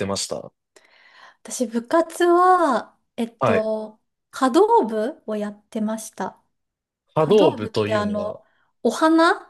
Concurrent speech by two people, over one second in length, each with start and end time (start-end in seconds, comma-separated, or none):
7.2-8.4